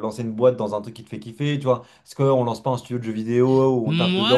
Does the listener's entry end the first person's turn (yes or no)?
yes